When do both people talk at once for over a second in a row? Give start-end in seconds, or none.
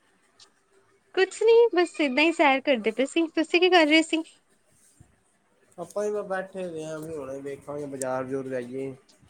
none